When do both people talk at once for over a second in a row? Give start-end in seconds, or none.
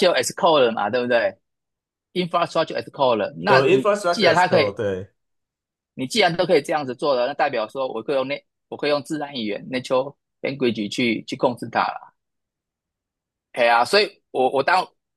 3.4-4.8